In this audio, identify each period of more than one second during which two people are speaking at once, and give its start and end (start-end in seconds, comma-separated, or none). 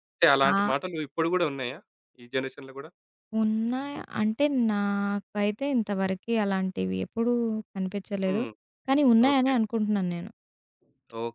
none